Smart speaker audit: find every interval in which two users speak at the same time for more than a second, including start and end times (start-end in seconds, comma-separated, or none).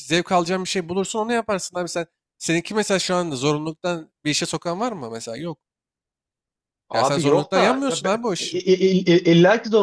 6.9-8.6